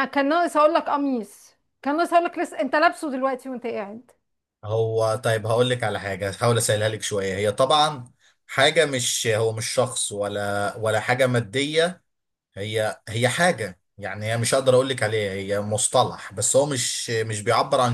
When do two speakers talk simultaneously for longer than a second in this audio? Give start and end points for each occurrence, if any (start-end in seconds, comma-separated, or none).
none